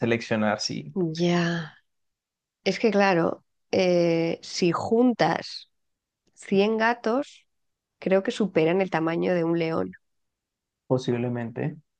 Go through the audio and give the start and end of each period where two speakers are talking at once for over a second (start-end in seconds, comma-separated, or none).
none